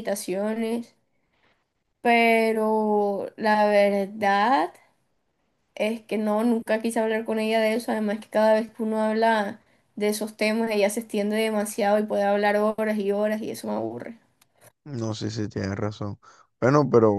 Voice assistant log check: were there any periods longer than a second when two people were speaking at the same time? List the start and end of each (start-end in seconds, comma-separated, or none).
none